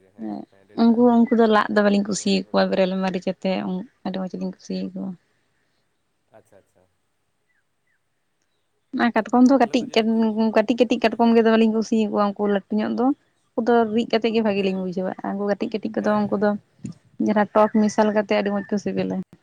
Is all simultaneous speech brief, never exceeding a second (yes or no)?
no